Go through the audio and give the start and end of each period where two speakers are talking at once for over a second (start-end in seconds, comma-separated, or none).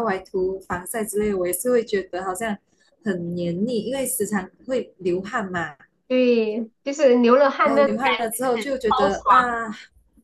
7.6-9.6